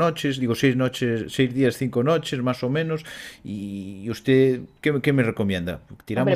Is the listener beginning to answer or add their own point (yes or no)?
no